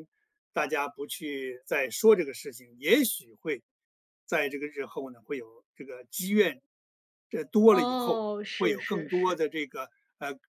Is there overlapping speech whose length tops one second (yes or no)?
yes